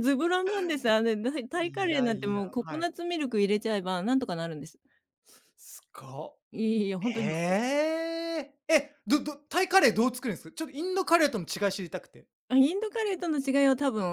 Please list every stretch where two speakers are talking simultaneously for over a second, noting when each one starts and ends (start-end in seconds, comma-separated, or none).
1.6-2.9